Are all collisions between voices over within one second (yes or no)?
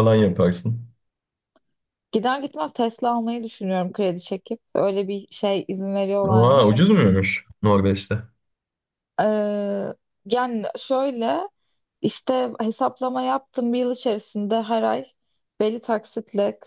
yes